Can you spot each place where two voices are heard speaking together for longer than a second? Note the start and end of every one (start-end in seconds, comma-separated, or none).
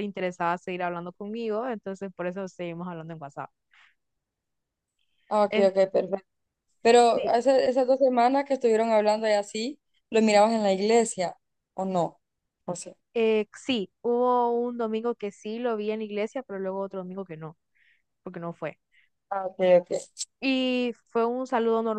none